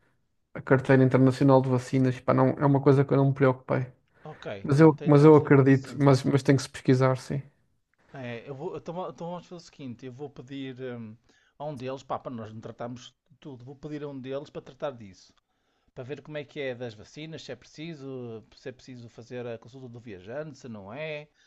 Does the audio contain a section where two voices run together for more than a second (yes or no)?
yes